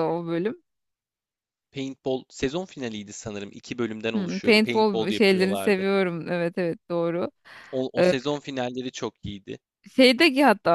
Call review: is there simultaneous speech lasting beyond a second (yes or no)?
yes